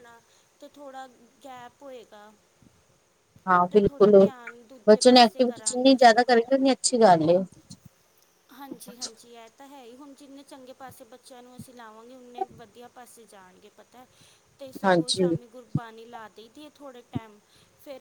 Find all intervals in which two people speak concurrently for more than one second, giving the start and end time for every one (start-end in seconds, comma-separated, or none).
4.9-6.3